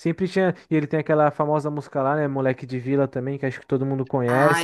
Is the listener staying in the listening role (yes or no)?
no